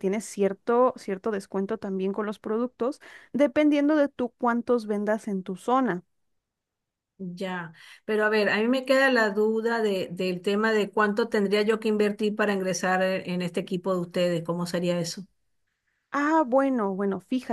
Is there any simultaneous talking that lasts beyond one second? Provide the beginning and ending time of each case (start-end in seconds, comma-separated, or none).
none